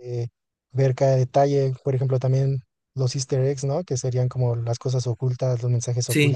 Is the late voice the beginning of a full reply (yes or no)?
no